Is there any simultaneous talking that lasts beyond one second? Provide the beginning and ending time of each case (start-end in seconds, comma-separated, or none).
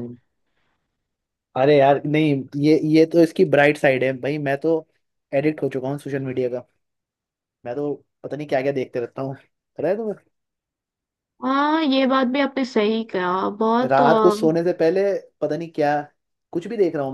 none